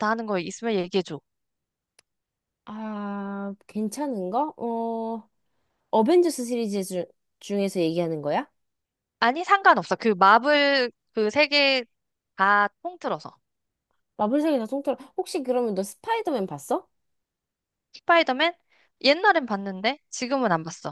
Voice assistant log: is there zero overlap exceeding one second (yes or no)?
yes